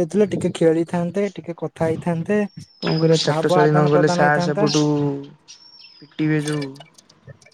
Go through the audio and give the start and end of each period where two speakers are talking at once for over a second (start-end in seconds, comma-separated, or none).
3.3-4.7